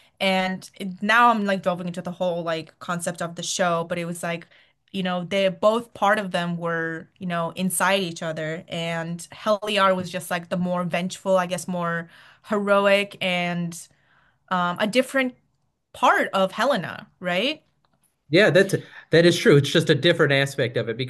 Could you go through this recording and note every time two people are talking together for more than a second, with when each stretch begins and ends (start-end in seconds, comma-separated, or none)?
none